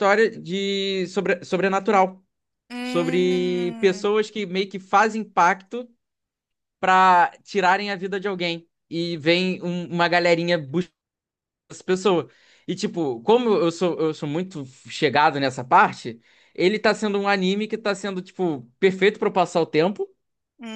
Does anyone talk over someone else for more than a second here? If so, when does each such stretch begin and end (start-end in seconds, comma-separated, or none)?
2.8-4.1